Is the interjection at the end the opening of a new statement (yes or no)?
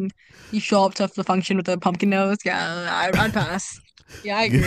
no